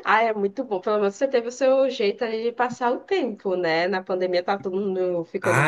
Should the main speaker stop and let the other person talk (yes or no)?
yes